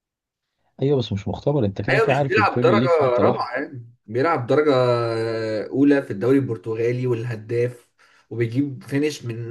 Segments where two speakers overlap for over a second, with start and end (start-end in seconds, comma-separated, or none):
1.9-3.5